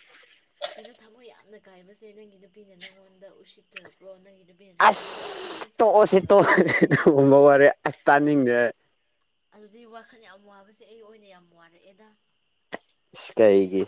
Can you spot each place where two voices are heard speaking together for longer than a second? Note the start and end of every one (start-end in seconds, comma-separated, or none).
4.9-6.6